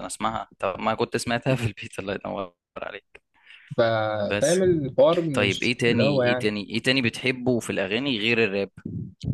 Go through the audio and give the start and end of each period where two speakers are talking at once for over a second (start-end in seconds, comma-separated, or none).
5.3-6.6